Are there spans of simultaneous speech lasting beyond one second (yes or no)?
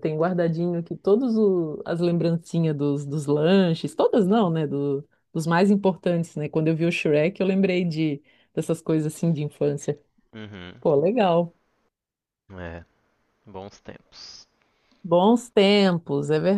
no